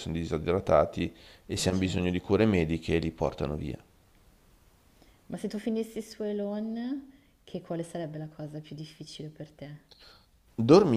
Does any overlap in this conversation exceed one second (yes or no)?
no